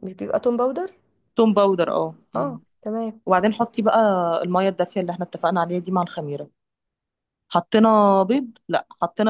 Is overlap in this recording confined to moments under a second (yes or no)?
yes